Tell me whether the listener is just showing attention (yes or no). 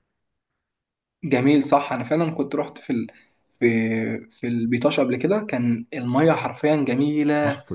yes